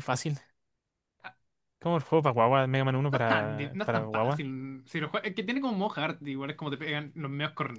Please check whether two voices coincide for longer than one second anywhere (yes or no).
yes